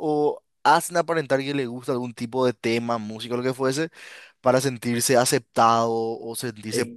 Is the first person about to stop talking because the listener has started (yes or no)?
yes